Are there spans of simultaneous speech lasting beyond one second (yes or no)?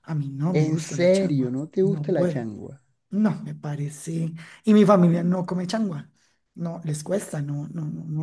yes